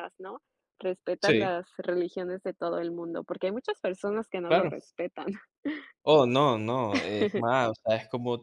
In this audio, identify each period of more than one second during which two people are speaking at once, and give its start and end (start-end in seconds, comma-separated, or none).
none